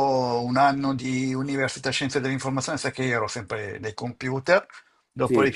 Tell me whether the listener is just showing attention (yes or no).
yes